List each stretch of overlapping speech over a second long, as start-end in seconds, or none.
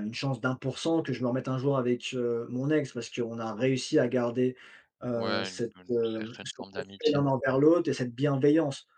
5.1-7.2